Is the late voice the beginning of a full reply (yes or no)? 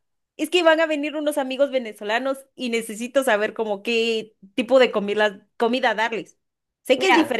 no